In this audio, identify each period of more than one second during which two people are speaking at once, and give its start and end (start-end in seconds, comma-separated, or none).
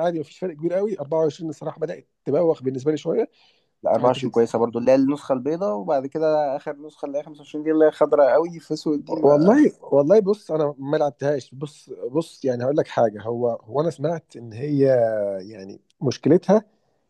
none